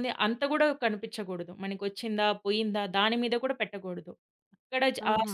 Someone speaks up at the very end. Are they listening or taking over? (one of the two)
listening